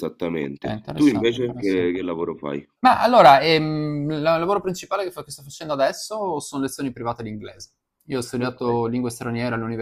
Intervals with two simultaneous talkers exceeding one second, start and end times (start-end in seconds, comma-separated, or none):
0.6-1.9